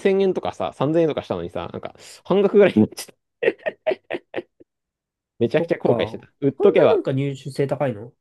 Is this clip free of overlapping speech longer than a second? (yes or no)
yes